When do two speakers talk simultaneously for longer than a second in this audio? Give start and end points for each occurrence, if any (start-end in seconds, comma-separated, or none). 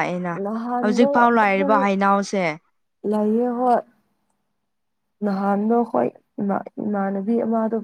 none